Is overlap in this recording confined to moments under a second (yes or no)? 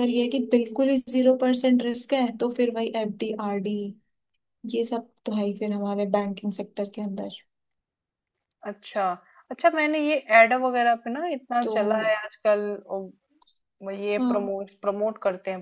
yes